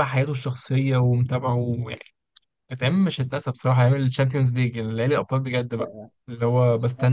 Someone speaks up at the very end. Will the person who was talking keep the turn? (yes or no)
yes